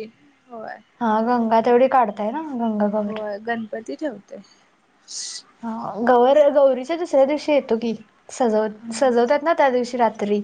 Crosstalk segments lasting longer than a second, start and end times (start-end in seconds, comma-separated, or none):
none